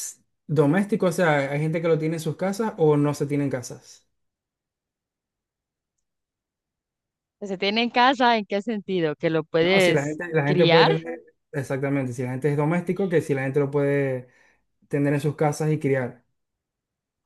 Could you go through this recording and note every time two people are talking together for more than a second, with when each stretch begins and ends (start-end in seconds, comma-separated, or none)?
9.6-10.9